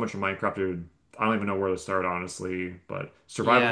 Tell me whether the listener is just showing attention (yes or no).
no